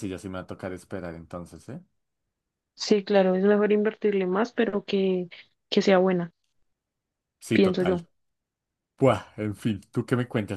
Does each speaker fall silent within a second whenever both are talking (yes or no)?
yes